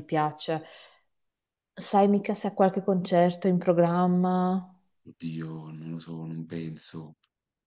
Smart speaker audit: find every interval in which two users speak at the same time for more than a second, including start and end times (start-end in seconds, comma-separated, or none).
none